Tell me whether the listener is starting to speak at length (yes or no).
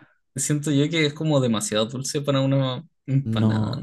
yes